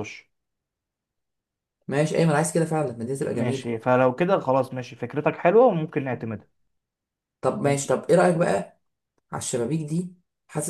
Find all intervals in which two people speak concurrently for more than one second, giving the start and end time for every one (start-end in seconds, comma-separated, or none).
none